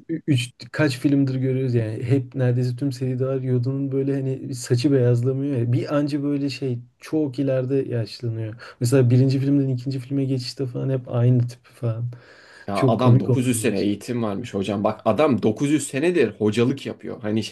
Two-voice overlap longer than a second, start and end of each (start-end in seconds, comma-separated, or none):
12.7-14.2